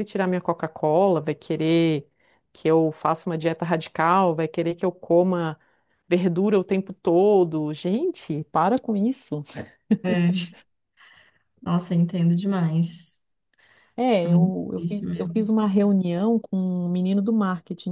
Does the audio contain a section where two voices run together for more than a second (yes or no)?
yes